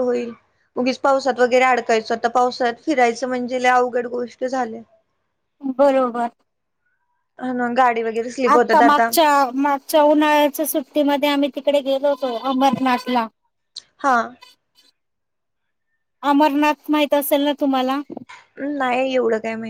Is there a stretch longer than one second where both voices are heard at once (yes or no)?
no